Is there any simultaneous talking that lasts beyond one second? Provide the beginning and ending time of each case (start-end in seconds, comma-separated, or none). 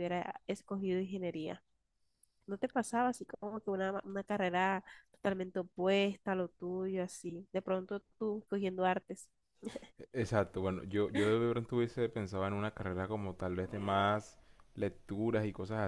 none